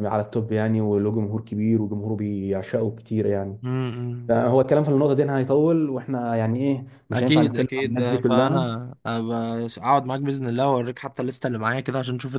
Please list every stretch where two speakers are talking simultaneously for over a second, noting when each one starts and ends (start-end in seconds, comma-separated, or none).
7.1-8.6